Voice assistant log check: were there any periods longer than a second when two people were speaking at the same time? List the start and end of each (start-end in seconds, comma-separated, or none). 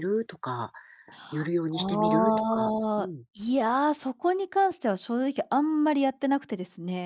1.7-3.3